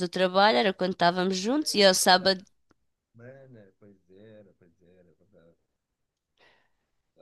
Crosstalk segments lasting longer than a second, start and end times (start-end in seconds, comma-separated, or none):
none